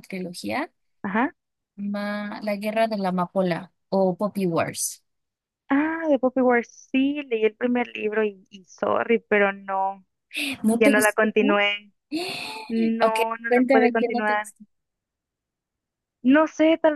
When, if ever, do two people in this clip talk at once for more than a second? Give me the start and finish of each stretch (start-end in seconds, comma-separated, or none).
13.0-14.5